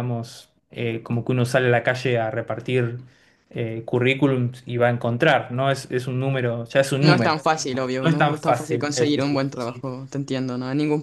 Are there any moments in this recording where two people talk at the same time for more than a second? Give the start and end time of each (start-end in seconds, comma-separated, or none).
8.0-9.8